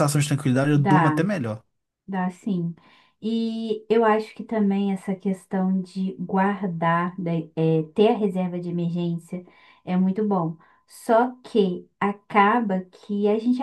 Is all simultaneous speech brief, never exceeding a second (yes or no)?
yes